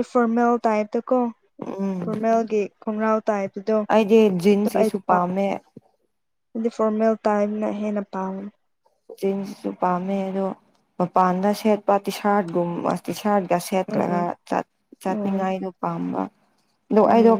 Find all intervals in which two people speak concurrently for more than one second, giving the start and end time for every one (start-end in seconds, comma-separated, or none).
none